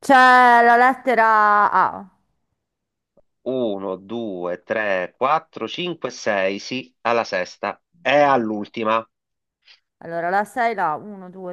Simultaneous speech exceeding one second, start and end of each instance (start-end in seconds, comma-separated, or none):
none